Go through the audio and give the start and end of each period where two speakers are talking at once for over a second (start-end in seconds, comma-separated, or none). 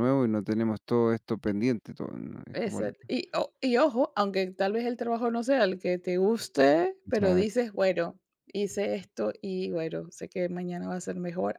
none